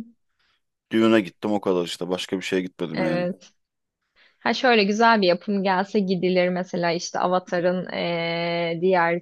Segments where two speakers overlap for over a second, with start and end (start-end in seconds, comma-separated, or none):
none